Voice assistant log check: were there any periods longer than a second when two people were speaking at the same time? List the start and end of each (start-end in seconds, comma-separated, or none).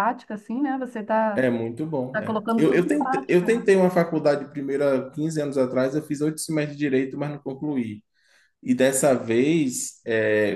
2.1-3.5